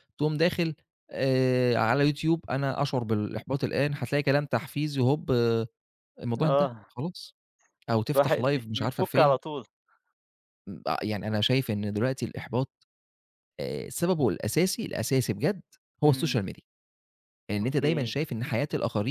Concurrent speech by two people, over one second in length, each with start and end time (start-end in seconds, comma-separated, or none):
8.2-9.4